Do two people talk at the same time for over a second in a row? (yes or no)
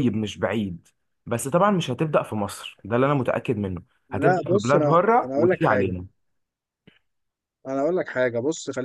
yes